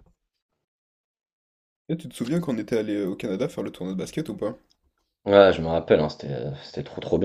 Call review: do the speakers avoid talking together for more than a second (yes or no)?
yes